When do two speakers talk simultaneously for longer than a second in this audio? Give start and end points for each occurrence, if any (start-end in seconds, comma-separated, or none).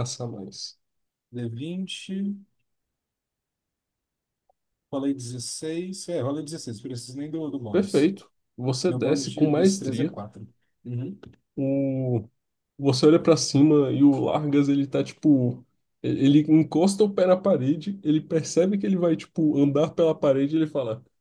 8.9-10.1